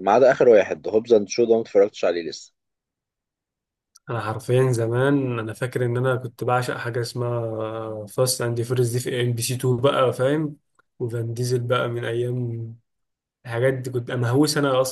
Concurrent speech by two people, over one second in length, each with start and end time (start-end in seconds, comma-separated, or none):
none